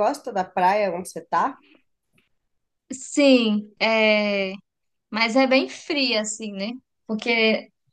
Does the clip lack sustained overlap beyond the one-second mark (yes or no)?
yes